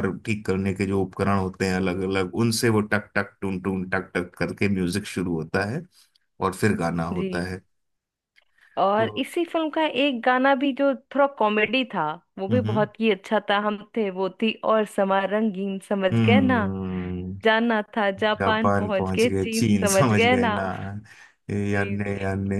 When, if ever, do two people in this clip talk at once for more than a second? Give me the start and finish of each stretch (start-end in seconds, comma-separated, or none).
18.4-20.5